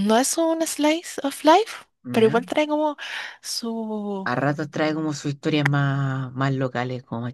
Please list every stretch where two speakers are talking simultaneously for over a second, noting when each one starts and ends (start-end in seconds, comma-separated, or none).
none